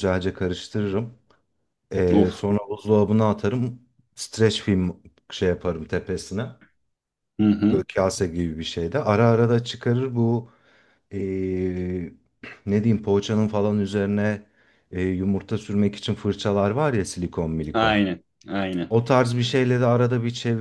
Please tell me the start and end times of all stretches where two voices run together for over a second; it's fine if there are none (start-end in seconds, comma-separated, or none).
none